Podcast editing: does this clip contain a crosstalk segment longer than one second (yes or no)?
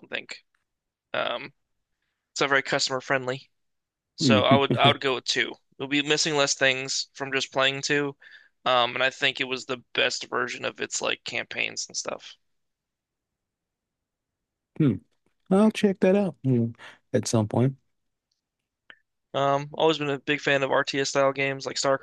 no